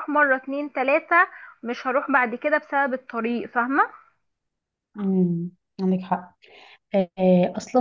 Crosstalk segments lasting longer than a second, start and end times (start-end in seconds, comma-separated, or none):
none